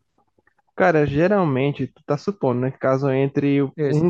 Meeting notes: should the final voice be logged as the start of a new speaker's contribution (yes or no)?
no